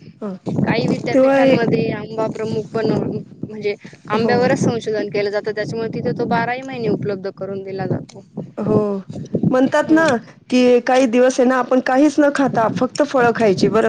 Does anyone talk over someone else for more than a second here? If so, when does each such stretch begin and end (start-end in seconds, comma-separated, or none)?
none